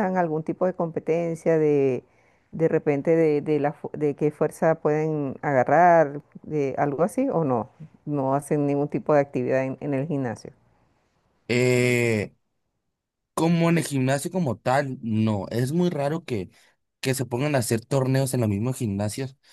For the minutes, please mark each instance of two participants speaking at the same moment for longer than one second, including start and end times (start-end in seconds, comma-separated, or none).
none